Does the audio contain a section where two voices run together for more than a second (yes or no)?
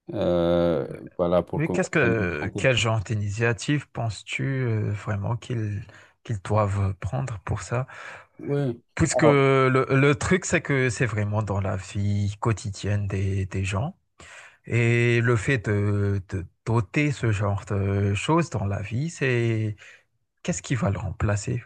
no